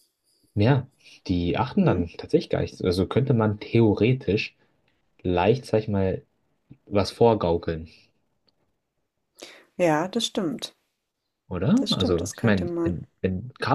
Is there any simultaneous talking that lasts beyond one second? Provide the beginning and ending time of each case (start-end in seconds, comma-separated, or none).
11.8-13.0